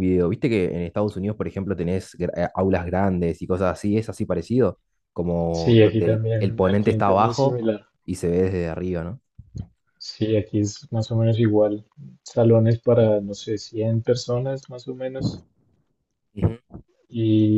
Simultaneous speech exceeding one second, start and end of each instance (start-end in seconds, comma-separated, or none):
5.5-7.6